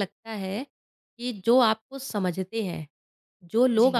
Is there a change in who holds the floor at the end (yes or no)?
no